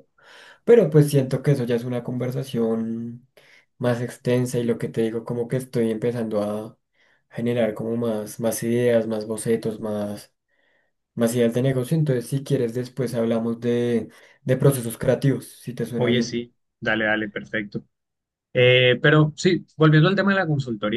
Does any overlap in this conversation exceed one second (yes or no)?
no